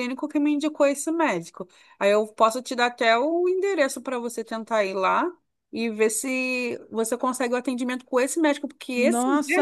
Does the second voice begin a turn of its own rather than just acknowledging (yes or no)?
yes